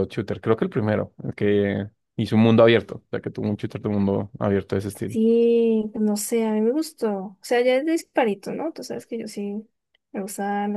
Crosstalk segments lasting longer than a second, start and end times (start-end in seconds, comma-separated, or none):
none